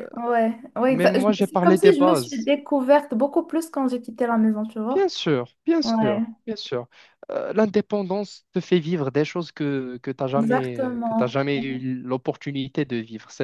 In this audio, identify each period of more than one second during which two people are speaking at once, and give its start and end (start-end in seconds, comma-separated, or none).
0.9-2.5, 10.3-11.8